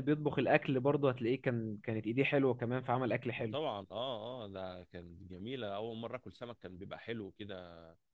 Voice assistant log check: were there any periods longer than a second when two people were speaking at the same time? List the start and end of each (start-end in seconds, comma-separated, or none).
none